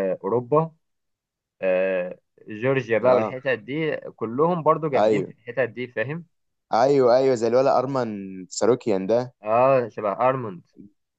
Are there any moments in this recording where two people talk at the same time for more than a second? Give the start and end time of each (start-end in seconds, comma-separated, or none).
none